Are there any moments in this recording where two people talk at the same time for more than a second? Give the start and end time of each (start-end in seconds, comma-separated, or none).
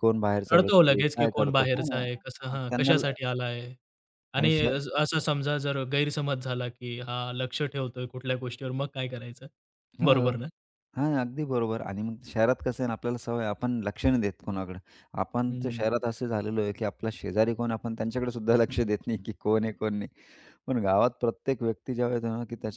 0.5-3.0